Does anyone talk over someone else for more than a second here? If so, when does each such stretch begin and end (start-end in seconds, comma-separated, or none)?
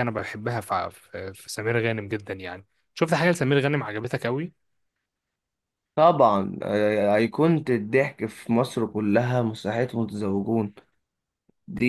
none